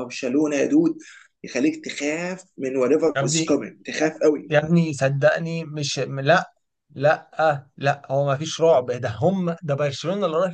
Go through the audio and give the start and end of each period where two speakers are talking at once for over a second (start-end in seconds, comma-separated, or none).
none